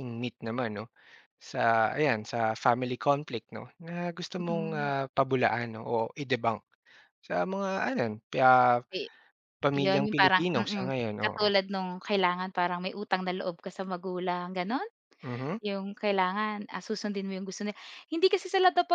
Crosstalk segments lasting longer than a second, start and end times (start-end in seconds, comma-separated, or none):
9.8-11.5